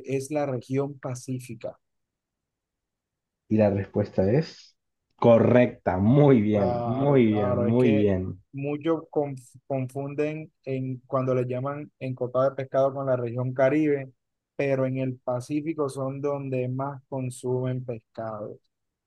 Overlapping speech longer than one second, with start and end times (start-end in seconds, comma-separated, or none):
6.5-8.1